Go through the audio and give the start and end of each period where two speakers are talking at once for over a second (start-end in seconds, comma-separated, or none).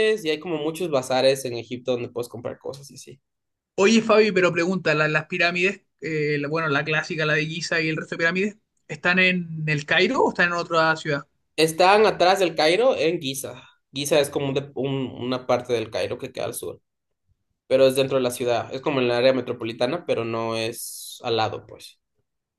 none